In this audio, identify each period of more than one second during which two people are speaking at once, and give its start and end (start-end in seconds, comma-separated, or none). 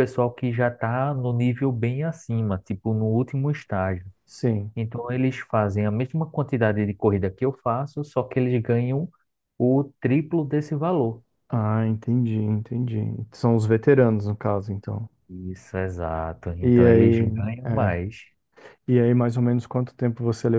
16.6-17.9